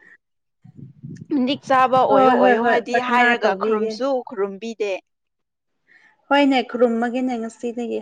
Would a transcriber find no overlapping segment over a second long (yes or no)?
no